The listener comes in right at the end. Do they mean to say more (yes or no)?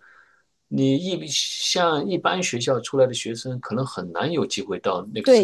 yes